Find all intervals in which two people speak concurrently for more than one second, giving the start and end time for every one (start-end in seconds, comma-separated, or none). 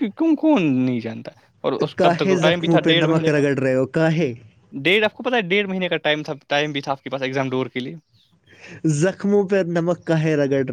2.0-3.4